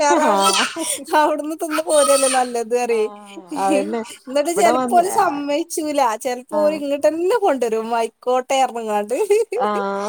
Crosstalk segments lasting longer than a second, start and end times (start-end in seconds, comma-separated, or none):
none